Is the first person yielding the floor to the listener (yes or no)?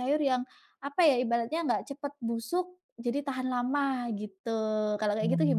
yes